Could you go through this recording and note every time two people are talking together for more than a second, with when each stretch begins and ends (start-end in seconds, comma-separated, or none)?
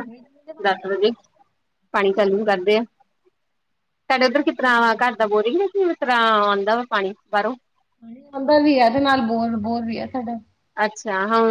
none